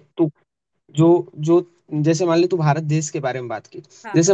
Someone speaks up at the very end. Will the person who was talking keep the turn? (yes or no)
yes